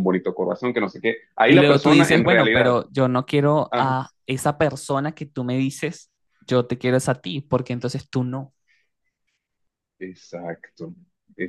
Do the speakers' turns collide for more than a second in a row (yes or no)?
yes